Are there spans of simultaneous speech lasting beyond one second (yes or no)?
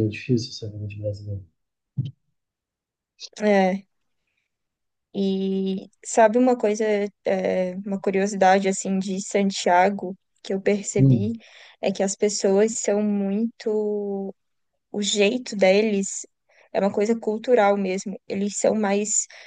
no